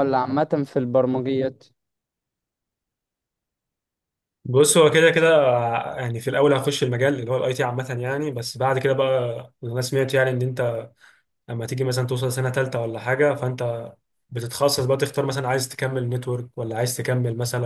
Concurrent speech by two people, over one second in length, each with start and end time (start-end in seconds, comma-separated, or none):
none